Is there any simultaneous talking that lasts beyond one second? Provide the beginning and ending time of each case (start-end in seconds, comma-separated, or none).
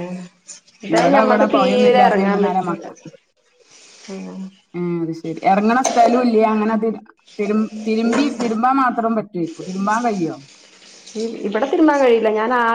0.9-2.8